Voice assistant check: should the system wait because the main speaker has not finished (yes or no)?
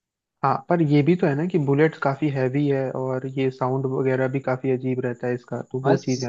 no